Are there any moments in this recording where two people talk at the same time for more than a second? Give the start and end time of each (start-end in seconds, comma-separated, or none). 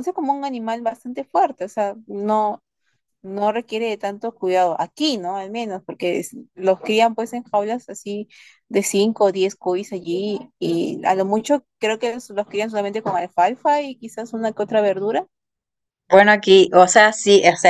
none